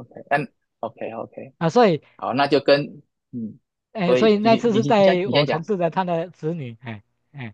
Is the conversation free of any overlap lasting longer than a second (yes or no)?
no